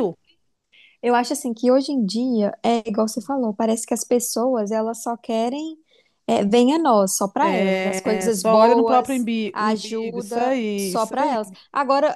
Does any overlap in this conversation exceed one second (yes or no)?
yes